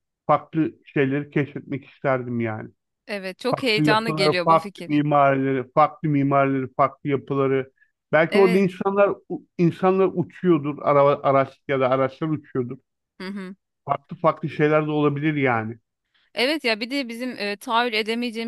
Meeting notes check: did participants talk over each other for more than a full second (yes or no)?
yes